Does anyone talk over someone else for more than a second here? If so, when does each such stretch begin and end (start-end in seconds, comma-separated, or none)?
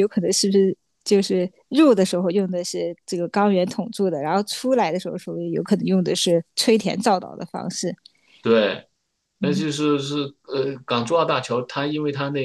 none